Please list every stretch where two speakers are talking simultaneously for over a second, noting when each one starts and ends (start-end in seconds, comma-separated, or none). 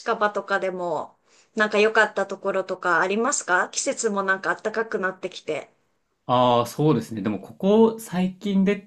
none